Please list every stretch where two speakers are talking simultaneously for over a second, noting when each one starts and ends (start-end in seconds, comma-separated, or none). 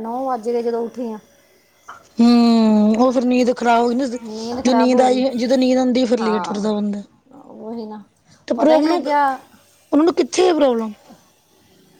none